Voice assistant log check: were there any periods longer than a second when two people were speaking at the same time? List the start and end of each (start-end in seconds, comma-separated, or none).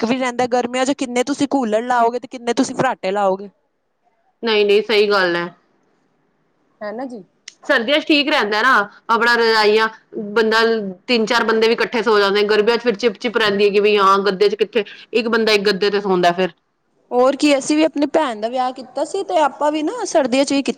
none